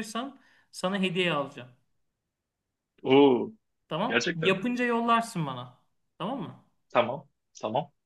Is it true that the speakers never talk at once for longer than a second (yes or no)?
yes